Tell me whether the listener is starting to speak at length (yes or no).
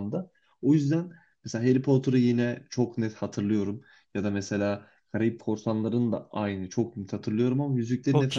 yes